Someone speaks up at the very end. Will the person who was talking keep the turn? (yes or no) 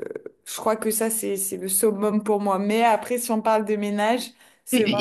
no